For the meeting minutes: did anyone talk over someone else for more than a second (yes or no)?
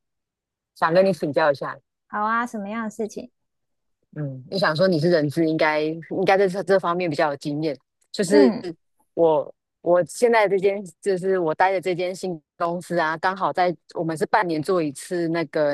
no